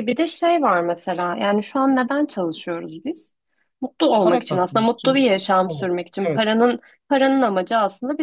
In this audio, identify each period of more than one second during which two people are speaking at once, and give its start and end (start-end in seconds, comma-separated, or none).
4.2-6.4